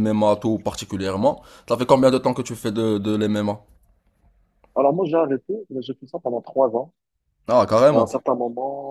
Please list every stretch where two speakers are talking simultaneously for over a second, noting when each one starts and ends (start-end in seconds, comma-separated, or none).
none